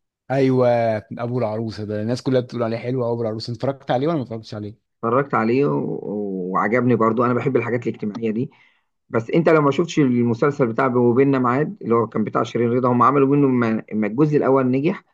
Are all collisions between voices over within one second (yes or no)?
yes